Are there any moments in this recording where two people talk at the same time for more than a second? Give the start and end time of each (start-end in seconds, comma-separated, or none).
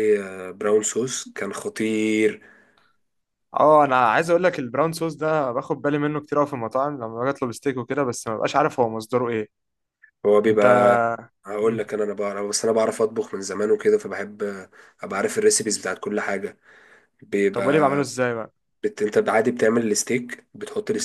none